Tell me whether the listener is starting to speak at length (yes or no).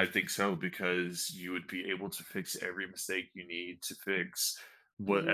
no